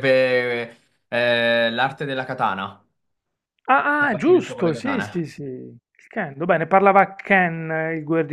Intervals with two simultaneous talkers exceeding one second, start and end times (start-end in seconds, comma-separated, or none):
3.8-5.2